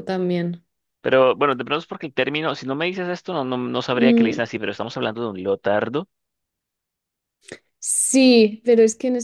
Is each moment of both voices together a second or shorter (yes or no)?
yes